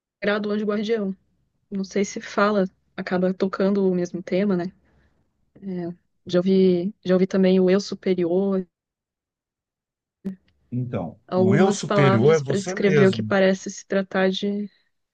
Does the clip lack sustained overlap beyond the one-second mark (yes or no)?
no